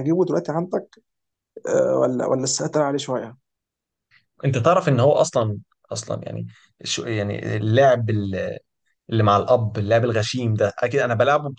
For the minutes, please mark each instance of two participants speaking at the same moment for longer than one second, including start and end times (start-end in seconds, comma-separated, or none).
none